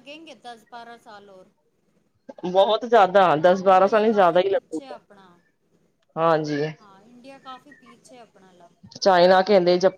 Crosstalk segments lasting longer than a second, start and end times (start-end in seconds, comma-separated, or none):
3.7-5.0